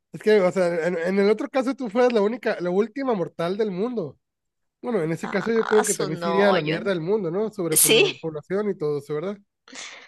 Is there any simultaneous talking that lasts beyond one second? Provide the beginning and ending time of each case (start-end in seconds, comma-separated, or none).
5.2-6.8